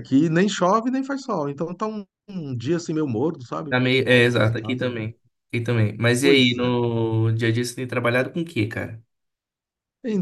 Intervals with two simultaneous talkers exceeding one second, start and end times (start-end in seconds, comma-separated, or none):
3.7-5.0